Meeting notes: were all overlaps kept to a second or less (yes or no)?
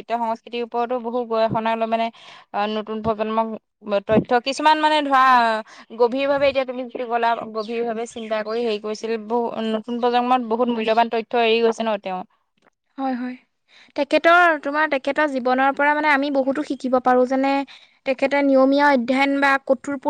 yes